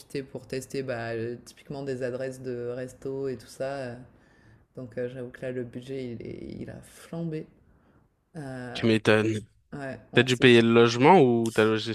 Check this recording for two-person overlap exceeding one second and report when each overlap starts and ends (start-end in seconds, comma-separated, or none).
none